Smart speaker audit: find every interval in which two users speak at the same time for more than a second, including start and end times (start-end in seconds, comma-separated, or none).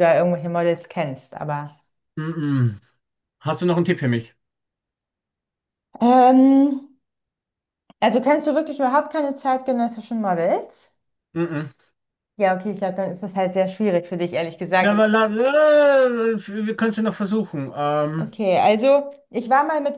none